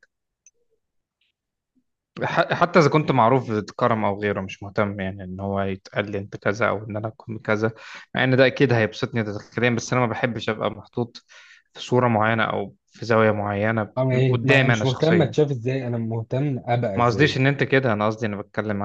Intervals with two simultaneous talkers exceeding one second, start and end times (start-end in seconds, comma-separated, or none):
14.0-15.3